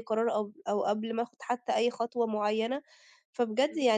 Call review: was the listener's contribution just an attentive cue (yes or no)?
yes